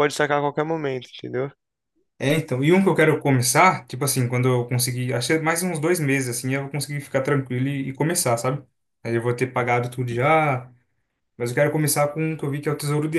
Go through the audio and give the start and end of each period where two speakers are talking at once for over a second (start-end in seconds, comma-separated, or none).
none